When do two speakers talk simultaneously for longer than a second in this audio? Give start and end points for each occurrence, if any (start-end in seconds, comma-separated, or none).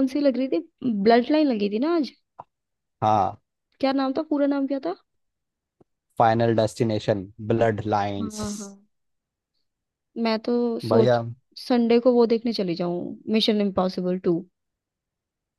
none